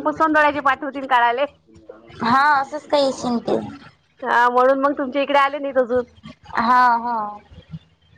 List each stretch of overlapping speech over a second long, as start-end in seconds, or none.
none